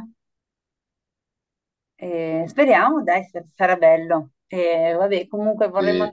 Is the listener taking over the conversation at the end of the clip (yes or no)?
no